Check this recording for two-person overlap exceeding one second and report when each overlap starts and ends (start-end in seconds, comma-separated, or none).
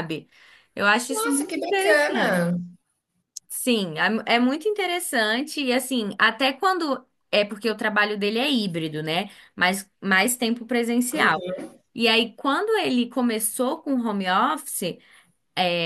1.1-2.4